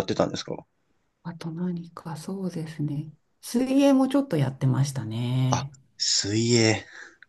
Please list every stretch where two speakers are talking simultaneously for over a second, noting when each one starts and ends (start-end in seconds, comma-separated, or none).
none